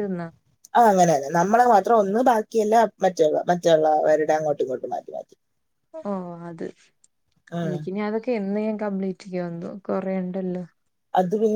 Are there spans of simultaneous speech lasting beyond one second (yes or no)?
no